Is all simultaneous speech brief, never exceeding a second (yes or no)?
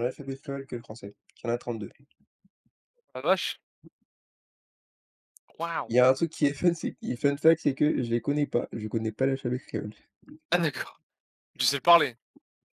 yes